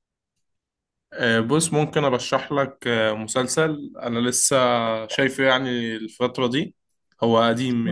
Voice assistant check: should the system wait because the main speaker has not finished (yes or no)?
yes